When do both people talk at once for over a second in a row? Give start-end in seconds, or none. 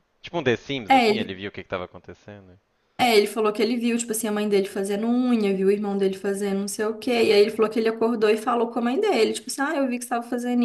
none